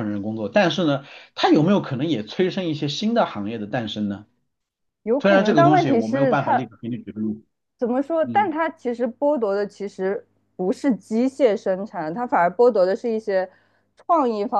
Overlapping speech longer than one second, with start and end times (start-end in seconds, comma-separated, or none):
5.2-6.7